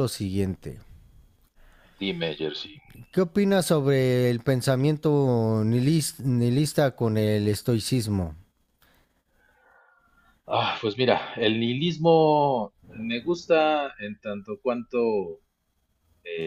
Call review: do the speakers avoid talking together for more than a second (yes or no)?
yes